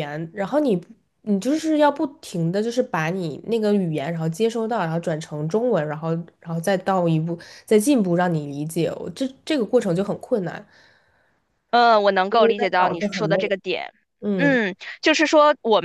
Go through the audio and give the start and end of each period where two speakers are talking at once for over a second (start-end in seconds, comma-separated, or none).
12.3-13.5